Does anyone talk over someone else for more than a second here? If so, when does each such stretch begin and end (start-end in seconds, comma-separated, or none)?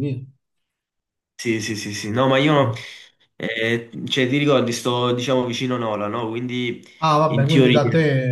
none